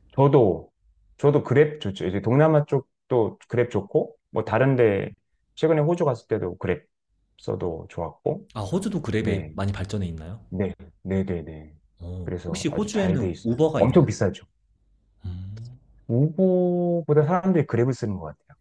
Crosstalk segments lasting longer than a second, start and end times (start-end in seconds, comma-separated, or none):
12.2-14.1